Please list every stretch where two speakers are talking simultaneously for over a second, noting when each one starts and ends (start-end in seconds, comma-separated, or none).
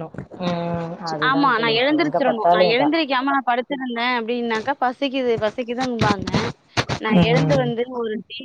1.3-3.0